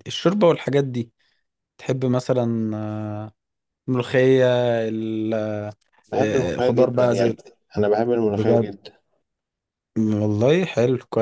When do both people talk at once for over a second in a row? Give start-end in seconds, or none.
6.1-7.4